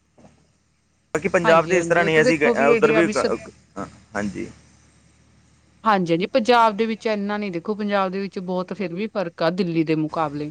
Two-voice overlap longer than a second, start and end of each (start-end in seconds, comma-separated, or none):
1.4-3.4